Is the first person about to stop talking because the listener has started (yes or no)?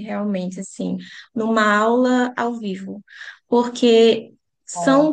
no